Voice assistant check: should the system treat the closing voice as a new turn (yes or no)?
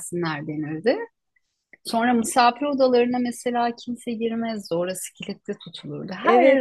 yes